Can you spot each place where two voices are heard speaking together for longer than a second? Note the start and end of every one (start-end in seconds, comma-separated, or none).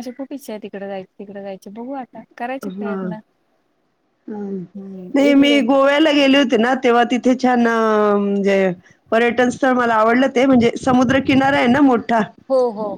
none